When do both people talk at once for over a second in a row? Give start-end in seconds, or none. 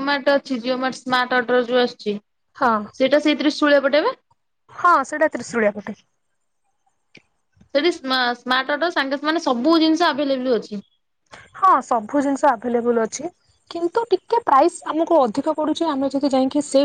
none